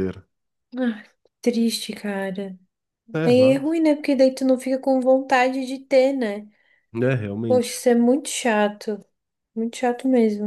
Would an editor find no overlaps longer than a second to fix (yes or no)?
yes